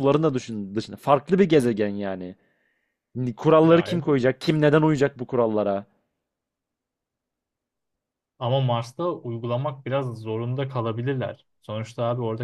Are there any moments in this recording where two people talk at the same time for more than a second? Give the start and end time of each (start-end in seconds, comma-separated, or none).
none